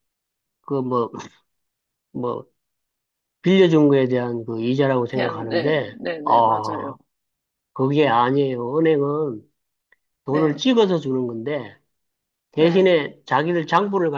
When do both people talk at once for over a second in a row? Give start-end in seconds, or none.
5.1-7.0